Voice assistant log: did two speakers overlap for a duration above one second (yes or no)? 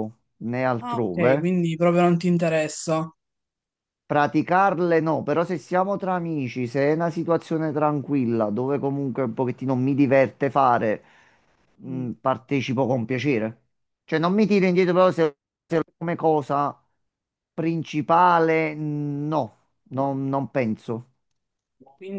no